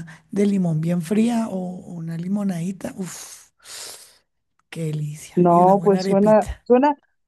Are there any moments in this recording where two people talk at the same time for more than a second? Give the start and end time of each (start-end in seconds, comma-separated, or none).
5.3-6.6